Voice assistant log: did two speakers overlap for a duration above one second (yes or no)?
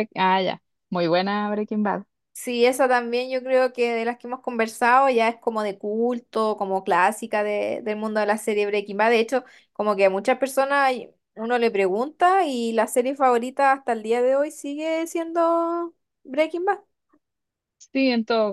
no